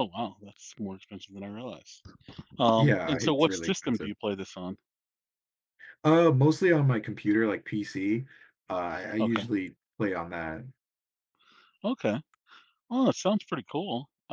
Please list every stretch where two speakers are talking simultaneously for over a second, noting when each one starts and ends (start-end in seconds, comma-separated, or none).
2.8-4.1